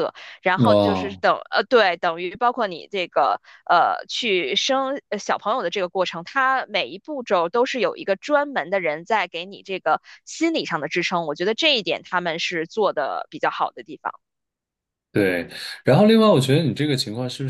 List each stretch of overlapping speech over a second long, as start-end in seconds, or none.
none